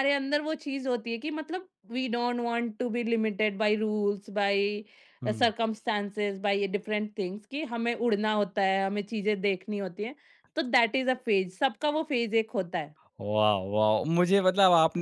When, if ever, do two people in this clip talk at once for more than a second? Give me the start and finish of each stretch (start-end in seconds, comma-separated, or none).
none